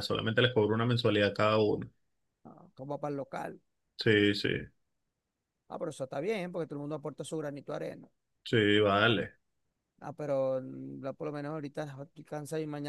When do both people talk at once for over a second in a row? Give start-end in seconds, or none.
none